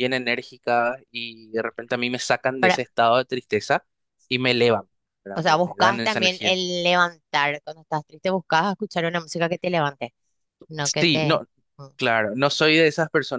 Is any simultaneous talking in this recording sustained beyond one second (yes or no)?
yes